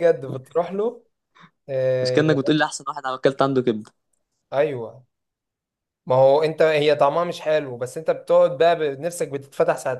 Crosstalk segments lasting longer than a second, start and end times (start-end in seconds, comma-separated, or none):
none